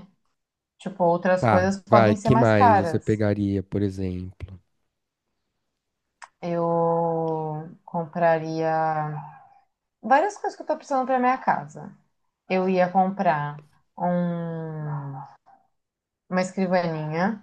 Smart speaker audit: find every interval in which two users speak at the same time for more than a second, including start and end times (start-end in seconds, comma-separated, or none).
1.4-3.2